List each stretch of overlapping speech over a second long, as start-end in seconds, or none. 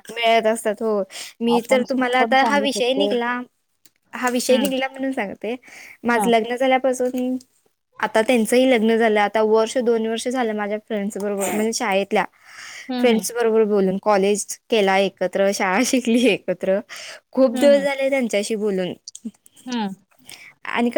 1.6-3.1